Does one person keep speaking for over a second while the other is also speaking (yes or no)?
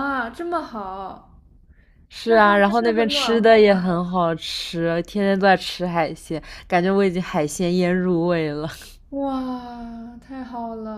yes